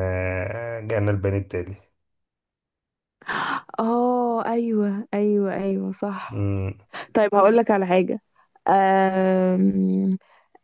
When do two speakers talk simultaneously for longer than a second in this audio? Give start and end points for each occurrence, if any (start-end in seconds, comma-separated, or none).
none